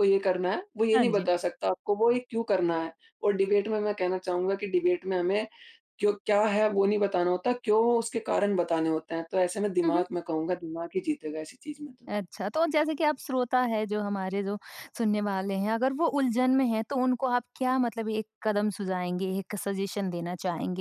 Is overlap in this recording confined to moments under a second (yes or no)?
yes